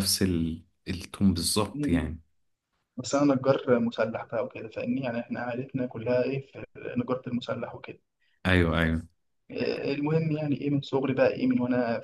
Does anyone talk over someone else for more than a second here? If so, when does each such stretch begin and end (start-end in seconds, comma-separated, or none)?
none